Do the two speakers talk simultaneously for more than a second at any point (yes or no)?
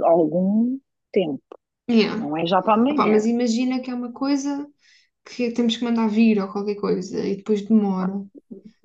no